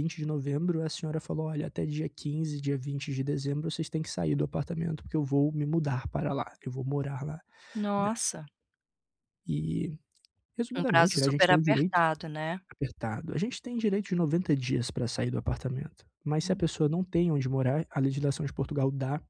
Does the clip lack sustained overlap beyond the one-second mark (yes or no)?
no